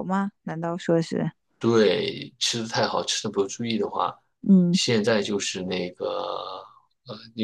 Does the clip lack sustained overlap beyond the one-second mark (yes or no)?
yes